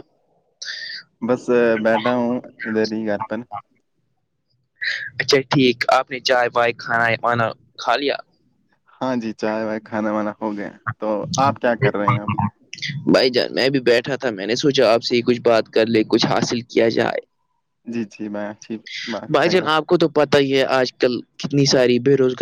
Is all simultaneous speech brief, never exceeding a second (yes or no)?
yes